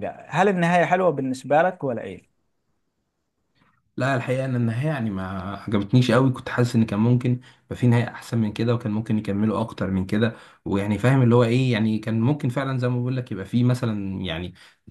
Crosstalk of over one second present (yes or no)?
no